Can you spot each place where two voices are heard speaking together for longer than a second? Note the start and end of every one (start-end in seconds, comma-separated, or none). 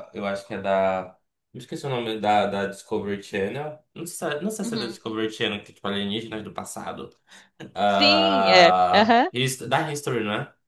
7.9-9.3